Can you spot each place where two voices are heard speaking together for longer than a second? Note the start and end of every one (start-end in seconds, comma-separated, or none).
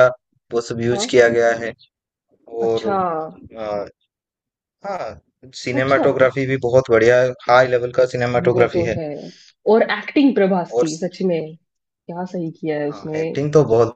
none